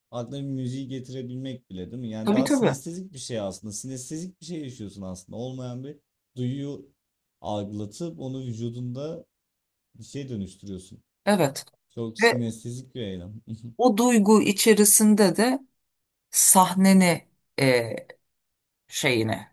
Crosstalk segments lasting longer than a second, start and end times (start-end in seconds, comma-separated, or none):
none